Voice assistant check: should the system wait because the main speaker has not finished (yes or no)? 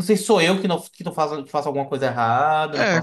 no